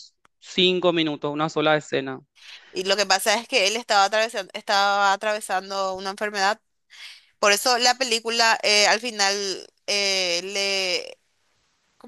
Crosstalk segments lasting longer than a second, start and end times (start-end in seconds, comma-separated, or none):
none